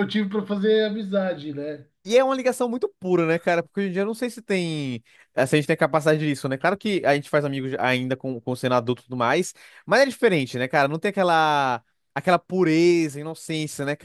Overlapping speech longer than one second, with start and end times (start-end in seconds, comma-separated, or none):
none